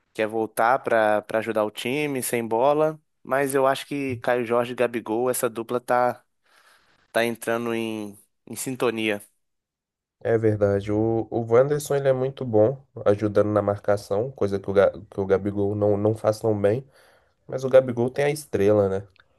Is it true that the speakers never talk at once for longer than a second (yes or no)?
yes